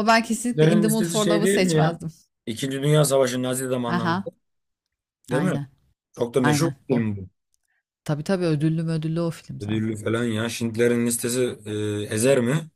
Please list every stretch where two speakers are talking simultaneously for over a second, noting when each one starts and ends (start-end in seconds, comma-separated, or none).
0.5-2.0